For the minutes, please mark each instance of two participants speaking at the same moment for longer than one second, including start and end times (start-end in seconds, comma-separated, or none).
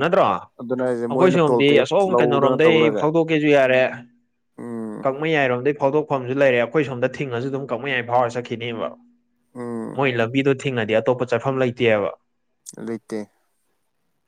0.6-3.0